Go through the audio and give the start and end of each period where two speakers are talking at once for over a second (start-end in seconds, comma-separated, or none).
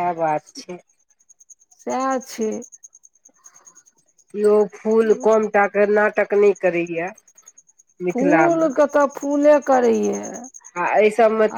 none